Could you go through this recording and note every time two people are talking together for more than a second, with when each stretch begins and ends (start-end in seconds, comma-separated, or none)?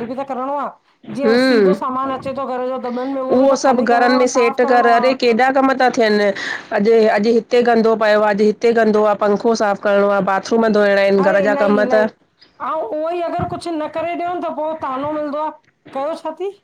3.6-5.0